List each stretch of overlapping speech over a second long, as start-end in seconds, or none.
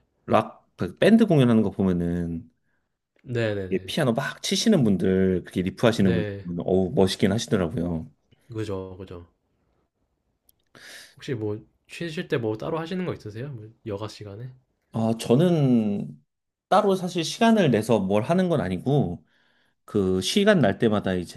none